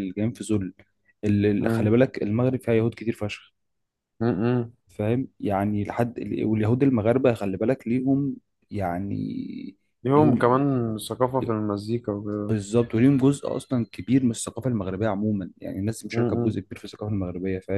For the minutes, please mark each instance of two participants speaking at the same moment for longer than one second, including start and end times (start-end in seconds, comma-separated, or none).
none